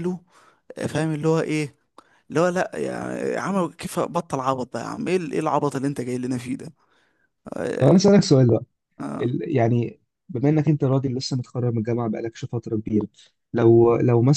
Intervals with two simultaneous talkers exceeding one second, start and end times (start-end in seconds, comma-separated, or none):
none